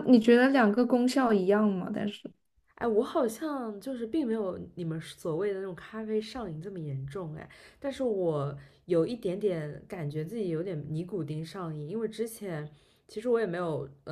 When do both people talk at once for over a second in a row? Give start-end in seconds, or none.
none